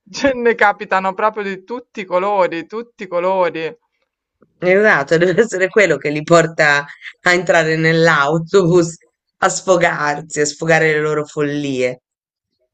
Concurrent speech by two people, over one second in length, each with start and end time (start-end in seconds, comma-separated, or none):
none